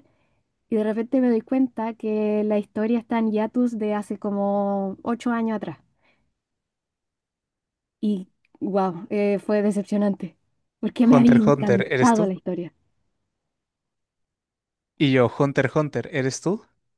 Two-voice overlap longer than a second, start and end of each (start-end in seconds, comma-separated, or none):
11.0-12.3